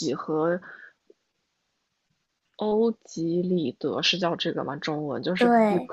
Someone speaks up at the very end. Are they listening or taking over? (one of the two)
listening